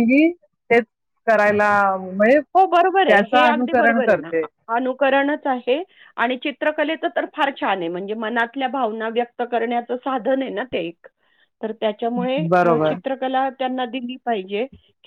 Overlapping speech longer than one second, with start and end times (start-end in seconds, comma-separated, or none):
2.5-4.3